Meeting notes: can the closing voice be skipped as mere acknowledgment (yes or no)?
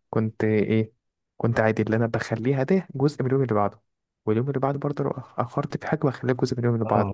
no